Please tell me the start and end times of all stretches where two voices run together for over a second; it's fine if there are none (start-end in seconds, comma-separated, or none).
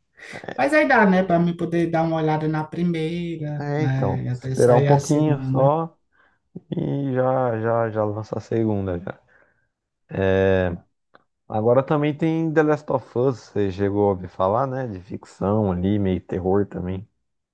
3.6-5.7